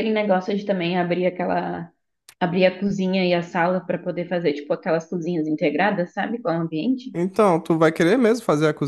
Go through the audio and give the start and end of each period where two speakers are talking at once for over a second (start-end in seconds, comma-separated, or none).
none